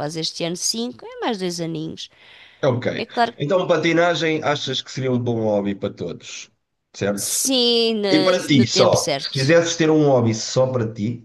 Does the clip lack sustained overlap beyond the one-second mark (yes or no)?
no